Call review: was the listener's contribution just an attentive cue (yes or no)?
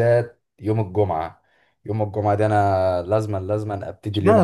no